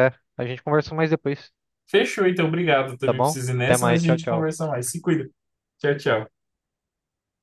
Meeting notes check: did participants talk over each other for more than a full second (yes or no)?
yes